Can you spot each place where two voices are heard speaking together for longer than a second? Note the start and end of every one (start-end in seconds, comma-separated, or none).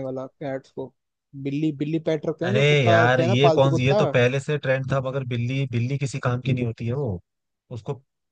2.5-4.0